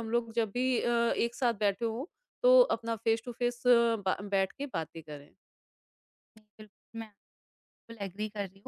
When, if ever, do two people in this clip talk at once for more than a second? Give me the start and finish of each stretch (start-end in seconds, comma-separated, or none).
none